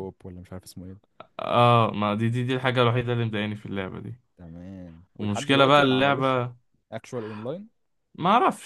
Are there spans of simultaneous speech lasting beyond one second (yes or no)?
yes